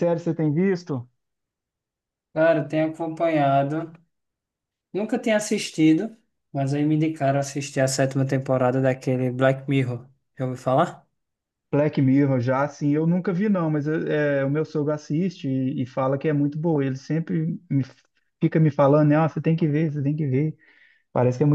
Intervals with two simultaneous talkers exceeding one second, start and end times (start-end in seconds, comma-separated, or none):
none